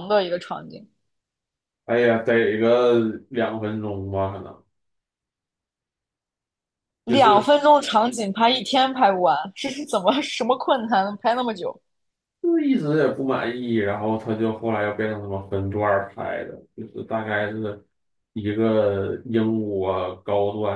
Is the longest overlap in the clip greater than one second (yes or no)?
no